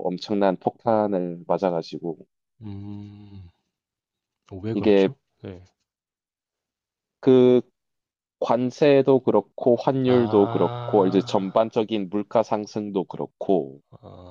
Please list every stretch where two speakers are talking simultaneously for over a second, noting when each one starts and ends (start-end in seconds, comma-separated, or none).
10.1-11.6